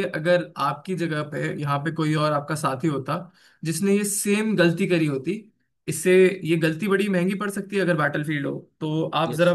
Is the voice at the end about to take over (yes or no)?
no